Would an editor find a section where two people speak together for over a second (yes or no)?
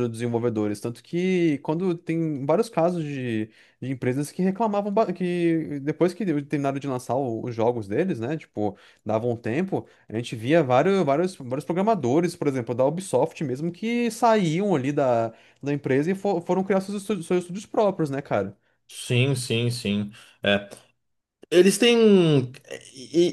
no